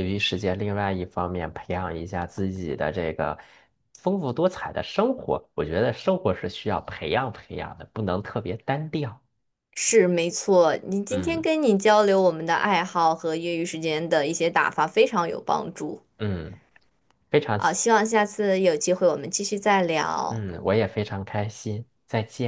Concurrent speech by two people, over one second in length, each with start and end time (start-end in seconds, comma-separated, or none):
none